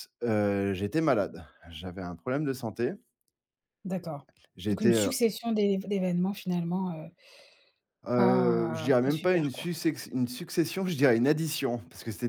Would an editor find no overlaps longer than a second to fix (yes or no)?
no